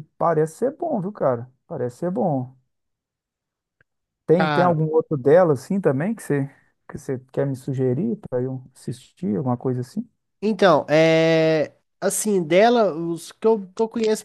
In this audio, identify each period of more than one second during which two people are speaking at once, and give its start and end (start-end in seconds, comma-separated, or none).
none